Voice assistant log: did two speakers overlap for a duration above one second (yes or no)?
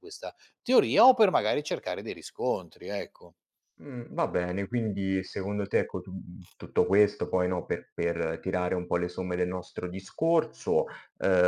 no